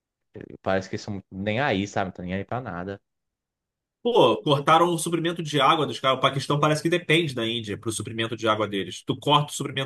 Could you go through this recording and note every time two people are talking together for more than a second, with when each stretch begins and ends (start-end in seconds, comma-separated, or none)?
none